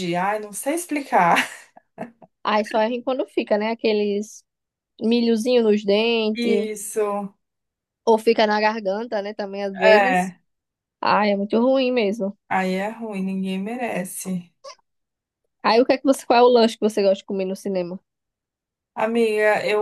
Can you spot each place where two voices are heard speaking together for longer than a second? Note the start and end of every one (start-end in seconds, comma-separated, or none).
none